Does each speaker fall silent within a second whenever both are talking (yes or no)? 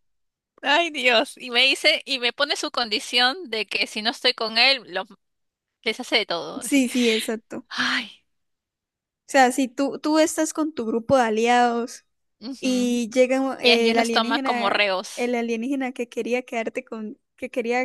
no